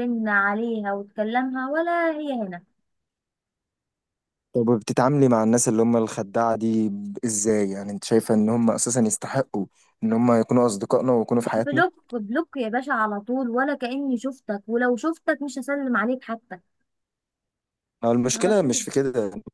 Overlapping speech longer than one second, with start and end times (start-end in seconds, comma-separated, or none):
none